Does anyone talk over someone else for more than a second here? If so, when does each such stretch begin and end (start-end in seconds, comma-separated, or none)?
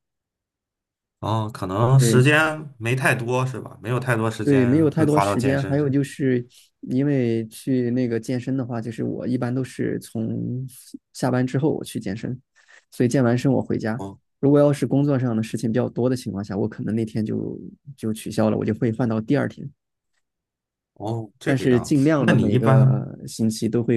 4.4-5.9, 21.4-23.1